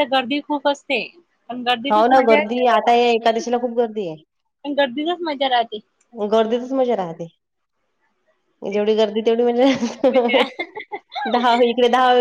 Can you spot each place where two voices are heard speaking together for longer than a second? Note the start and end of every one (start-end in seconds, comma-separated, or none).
1.9-3.4